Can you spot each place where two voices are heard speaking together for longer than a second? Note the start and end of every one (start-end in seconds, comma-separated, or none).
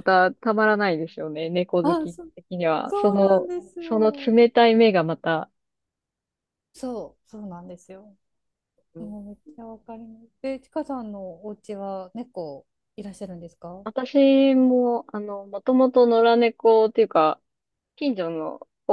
2.8-4.3